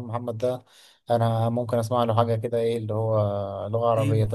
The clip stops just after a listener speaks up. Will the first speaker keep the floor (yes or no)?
no